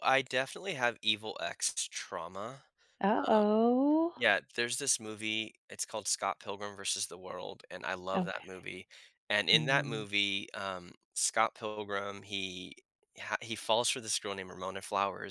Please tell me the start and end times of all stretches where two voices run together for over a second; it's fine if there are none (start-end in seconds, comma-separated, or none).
none